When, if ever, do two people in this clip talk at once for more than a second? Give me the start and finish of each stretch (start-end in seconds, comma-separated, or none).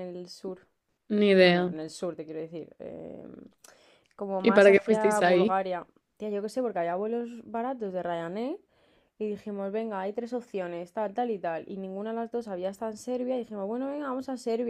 4.4-5.6